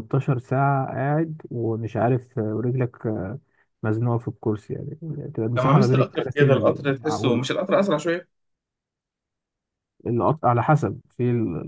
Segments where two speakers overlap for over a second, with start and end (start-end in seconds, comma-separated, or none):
5.6-7.5